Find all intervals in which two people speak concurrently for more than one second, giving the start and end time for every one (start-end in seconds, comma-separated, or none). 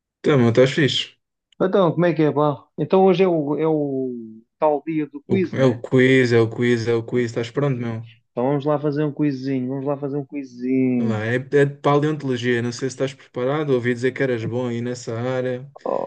none